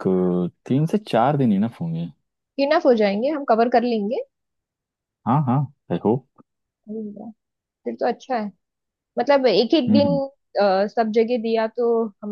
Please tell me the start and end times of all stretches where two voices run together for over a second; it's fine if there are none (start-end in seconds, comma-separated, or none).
none